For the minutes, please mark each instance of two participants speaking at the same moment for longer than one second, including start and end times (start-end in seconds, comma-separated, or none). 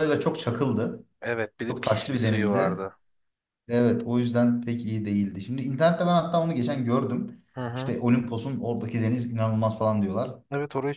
1.7-2.9